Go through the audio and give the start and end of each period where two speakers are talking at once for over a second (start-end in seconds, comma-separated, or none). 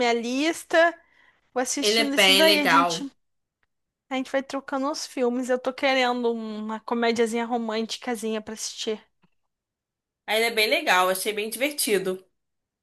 1.8-3.1